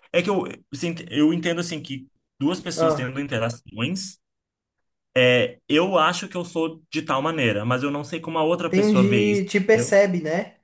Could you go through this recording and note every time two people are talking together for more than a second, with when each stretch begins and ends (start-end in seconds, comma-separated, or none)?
8.7-10.0